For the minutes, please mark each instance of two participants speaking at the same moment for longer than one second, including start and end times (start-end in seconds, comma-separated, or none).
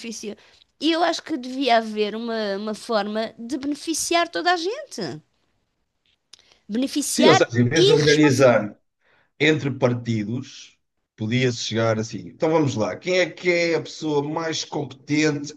7.1-8.6